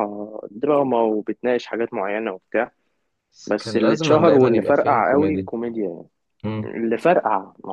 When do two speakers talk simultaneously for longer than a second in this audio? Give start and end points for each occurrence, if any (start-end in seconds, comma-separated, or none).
3.5-5.5